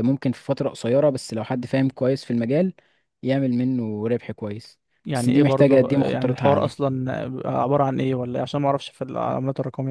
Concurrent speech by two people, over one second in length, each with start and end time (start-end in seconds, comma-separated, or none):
5.1-6.8